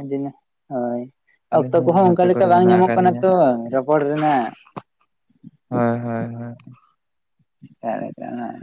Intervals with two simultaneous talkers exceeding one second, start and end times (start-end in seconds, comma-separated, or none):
1.5-3.2